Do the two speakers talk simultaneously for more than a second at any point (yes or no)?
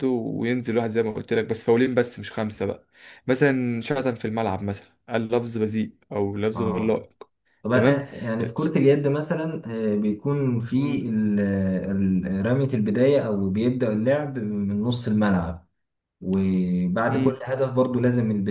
no